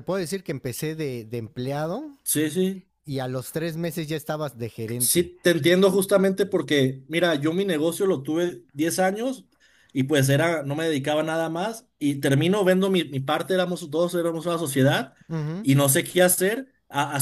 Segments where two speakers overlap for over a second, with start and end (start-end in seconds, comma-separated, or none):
none